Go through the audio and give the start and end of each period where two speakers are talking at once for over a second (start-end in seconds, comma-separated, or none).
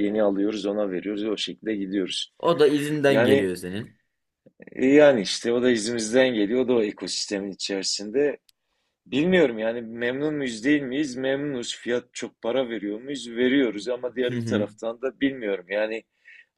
none